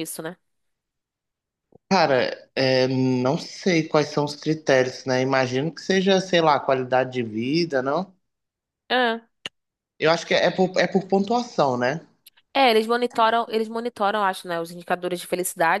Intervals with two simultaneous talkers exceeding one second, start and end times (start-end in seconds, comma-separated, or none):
none